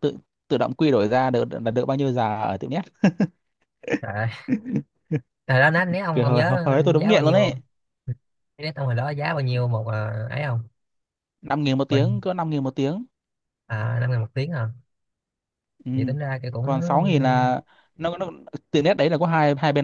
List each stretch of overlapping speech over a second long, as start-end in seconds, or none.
6.1-7.5